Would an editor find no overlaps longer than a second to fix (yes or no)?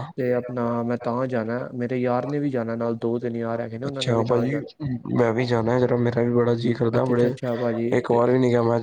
no